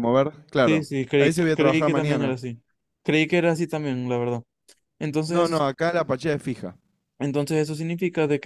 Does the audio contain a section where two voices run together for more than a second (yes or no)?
yes